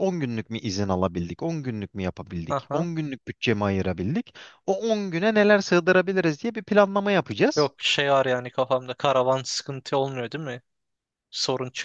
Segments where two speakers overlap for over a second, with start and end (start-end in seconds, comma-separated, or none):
none